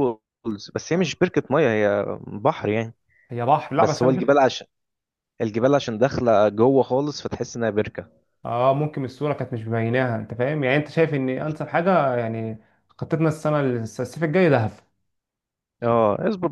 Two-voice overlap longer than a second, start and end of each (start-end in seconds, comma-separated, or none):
none